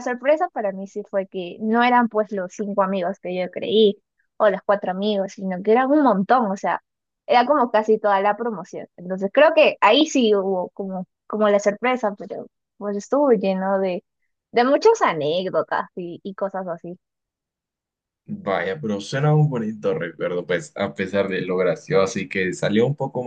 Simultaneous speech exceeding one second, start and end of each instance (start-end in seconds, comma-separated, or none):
none